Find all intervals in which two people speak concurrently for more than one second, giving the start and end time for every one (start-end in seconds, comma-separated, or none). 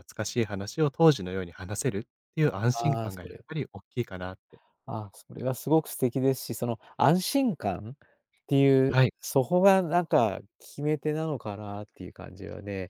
none